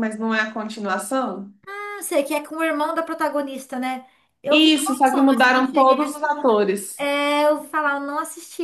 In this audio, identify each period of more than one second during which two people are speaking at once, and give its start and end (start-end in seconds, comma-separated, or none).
4.5-6.0